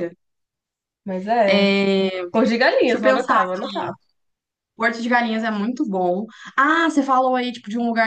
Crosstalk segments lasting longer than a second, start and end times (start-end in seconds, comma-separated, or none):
2.6-3.9